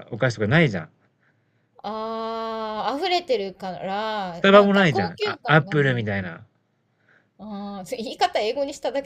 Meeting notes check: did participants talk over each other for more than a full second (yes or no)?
yes